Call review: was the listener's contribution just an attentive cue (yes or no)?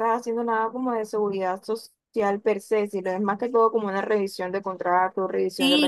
no